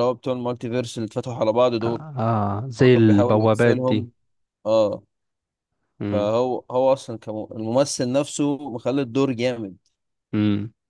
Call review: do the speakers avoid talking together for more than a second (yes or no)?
no